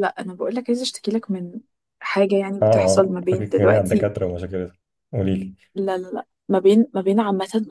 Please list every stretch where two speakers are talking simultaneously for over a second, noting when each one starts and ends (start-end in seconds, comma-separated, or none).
2.6-4.1